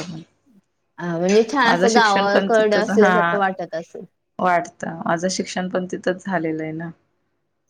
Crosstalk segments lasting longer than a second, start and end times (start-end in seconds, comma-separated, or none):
1.6-3.1